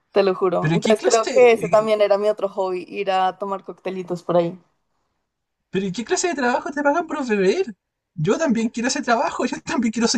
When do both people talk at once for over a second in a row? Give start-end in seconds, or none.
0.6-1.9